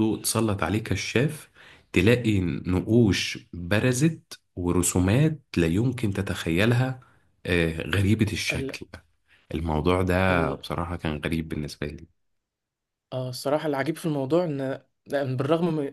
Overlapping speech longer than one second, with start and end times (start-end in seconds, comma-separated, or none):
none